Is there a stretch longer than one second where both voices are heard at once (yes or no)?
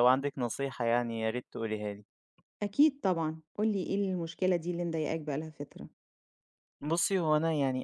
no